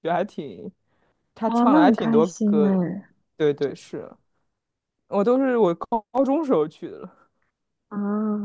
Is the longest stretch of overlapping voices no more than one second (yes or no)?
no